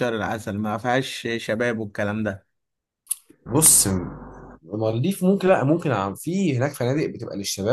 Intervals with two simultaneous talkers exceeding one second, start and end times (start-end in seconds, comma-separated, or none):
none